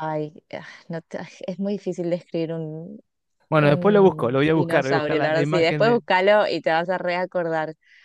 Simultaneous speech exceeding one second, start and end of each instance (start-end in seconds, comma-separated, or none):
3.5-6.0